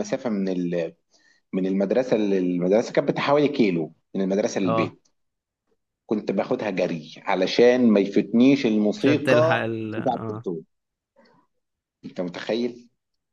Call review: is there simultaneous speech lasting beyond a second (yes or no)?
yes